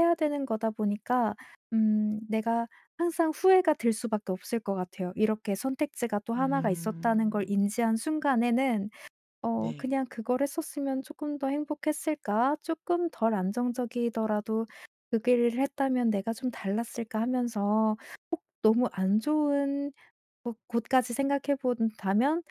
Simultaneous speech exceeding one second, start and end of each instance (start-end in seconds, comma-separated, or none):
6.3-7.6